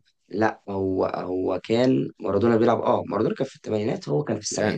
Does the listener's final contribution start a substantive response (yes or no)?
yes